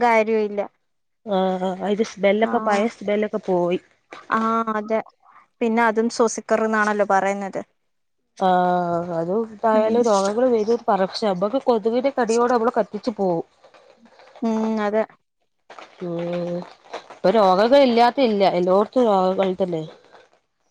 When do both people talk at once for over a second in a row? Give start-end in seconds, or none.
none